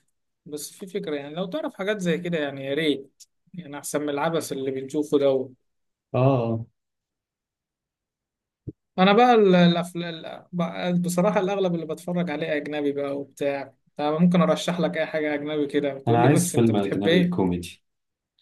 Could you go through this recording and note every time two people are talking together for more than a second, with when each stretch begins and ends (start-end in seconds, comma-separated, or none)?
16.1-17.4